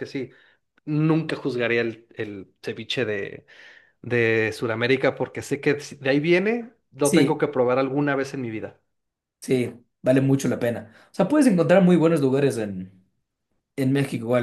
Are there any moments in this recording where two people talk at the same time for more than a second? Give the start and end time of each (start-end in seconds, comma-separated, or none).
none